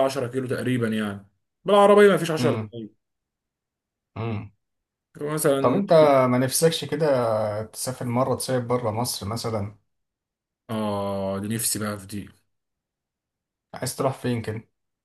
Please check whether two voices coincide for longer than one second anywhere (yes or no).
no